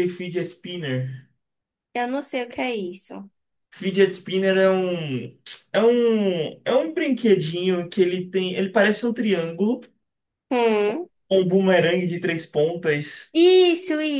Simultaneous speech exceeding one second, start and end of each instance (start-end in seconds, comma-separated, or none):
none